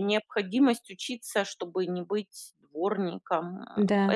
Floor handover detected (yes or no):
no